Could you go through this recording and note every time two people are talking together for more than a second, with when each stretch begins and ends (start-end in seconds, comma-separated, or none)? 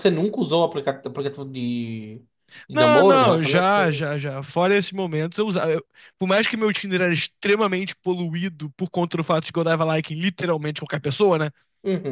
2.7-4.1